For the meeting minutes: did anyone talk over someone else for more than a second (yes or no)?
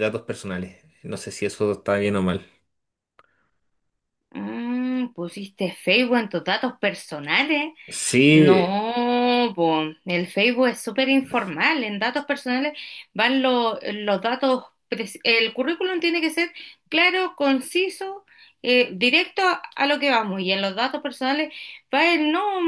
no